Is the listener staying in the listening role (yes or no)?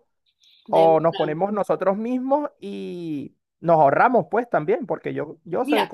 no